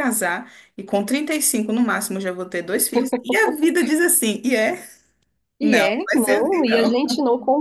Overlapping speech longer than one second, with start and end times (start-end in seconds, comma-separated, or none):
5.6-7.0